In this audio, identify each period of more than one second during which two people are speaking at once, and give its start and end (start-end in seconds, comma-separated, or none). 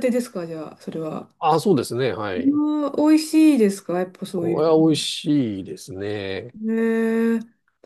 none